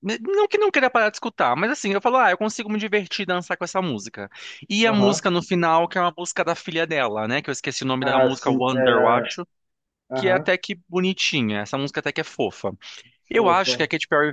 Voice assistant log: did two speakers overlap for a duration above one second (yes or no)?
yes